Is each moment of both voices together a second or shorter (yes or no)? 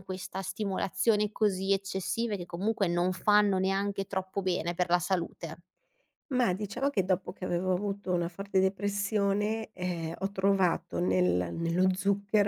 yes